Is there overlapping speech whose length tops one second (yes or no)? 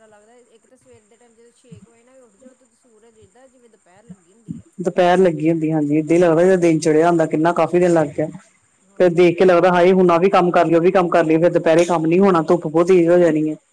yes